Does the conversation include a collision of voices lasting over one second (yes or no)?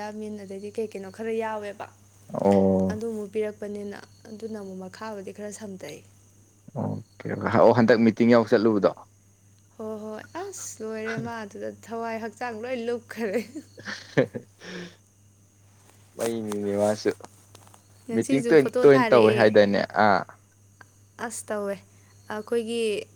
yes